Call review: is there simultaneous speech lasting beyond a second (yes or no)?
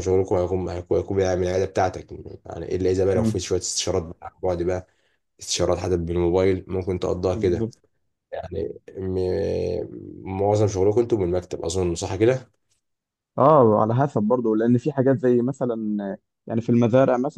no